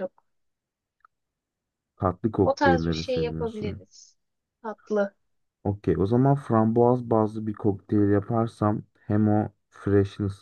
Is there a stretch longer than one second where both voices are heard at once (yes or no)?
yes